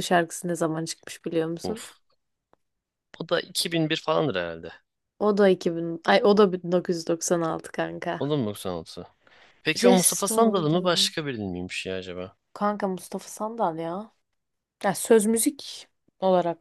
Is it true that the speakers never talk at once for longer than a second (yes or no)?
no